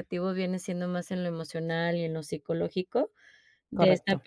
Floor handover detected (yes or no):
no